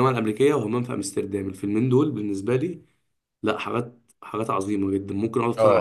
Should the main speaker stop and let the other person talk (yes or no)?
yes